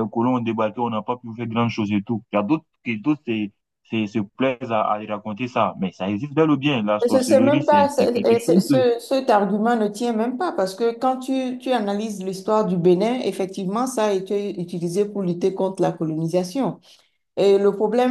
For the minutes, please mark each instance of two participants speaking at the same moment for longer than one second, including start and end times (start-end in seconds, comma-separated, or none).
7.1-8.9